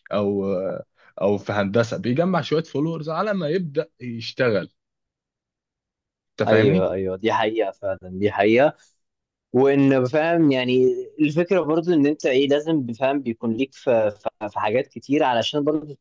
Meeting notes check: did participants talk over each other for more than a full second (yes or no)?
no